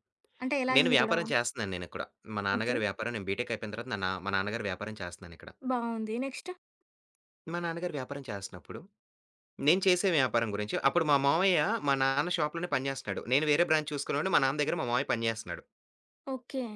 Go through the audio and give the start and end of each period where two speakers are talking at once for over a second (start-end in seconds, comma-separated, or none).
none